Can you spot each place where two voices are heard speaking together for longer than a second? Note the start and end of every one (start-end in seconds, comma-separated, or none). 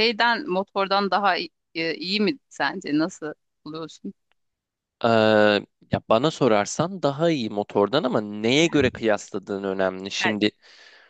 none